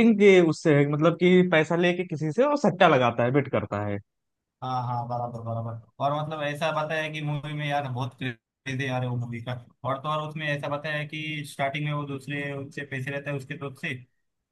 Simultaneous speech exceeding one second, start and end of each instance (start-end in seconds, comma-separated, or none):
none